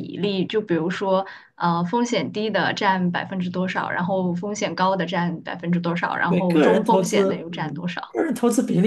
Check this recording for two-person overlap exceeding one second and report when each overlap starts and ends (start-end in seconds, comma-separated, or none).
6.2-8.2